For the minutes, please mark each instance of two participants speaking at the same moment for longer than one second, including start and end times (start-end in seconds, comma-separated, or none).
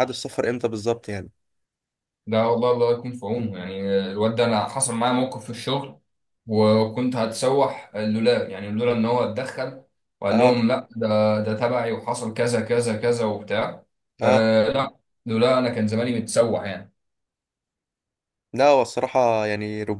none